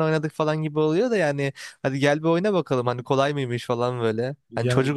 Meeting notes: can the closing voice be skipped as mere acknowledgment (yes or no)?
yes